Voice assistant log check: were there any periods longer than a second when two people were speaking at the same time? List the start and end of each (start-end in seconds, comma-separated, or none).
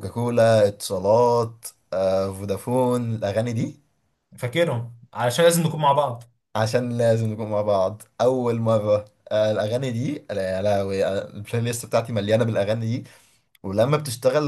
none